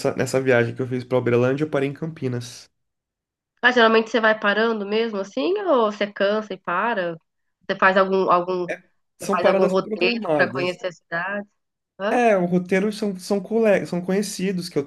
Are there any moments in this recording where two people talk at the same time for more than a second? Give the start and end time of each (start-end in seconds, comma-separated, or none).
9.2-10.8